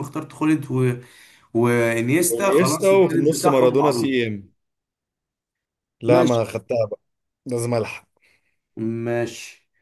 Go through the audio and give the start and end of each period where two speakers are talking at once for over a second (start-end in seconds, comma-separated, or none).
2.2-4.1